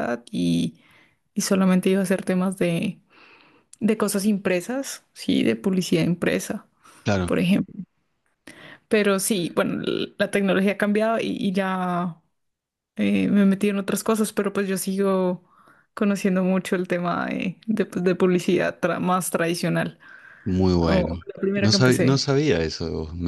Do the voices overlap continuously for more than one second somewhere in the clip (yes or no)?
yes